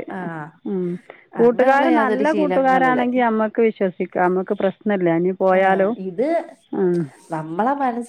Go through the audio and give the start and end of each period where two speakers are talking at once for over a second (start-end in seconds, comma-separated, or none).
1.4-3.0